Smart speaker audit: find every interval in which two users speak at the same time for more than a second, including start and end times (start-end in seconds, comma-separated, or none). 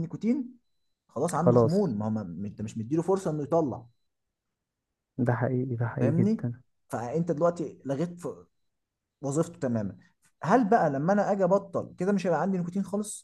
none